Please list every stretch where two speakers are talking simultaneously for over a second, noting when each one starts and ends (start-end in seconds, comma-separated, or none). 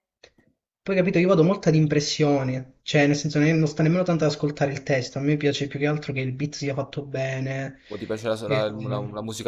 none